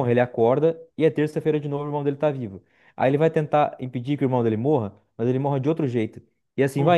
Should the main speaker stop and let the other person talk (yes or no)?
no